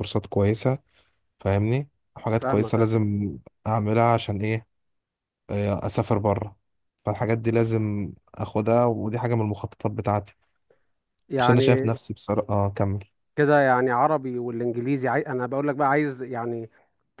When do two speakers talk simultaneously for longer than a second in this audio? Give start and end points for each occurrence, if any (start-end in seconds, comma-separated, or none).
none